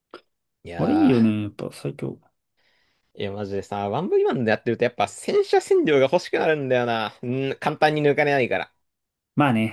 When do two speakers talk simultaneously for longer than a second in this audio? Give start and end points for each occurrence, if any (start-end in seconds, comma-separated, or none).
none